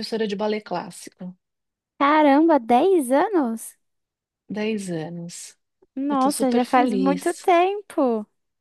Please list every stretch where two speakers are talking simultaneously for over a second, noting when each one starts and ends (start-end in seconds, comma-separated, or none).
6.1-7.5